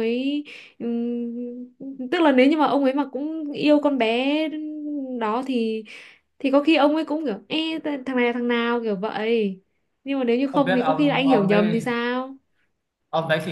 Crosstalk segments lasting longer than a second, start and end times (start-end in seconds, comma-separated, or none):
10.5-11.8